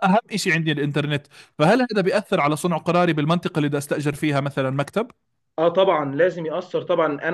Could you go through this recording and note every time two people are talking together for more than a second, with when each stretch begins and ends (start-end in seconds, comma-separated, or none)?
none